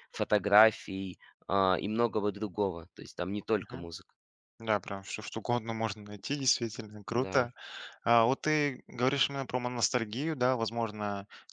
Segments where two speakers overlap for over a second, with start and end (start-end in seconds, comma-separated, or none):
none